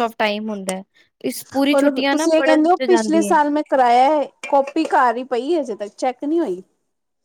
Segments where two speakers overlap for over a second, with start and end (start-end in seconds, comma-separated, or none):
1.8-3.3